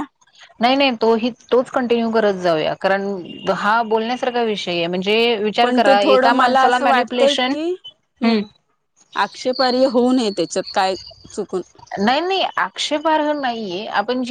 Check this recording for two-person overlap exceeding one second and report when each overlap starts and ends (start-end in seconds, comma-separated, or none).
5.6-7.5